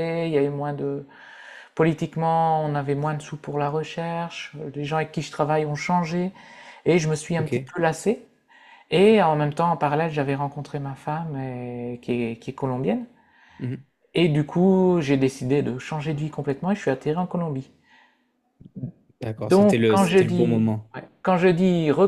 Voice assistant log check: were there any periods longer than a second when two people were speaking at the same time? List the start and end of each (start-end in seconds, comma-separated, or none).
19.5-20.9